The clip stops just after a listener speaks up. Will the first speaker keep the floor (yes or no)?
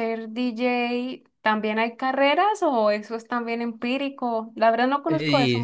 no